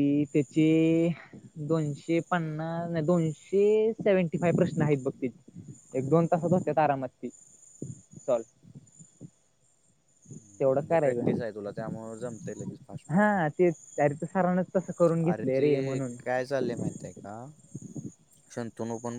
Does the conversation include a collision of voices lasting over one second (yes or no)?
no